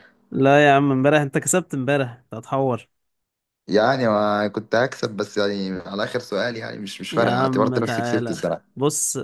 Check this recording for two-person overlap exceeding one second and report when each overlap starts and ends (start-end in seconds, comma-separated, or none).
7.1-8.6